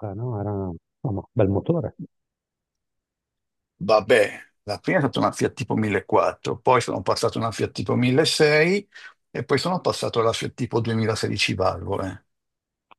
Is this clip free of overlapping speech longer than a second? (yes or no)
yes